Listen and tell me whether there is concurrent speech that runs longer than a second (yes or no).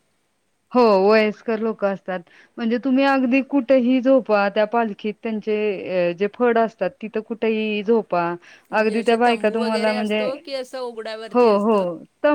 yes